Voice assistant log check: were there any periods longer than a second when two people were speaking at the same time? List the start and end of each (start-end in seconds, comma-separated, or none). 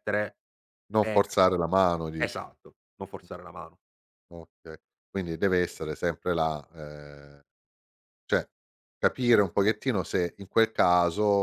none